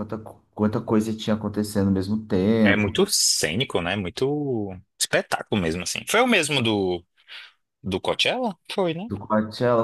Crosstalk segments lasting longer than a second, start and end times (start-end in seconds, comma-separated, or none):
none